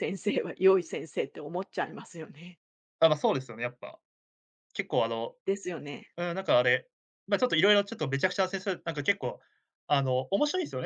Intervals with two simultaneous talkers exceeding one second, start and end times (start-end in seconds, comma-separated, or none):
none